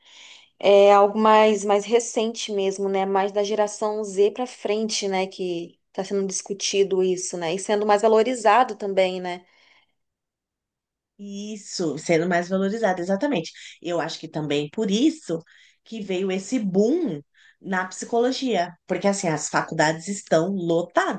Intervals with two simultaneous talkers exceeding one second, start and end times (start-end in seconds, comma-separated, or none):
none